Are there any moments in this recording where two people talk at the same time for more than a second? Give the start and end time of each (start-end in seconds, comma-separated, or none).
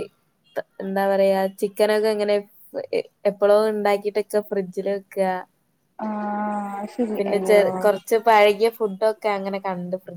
none